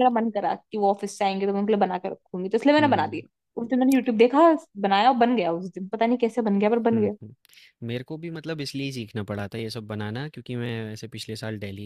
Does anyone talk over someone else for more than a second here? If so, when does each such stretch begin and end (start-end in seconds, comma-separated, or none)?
none